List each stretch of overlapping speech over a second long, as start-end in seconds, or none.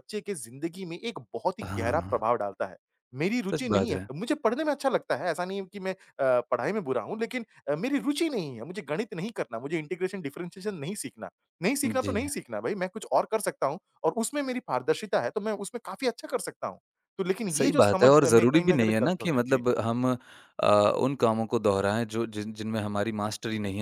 17.6-19.6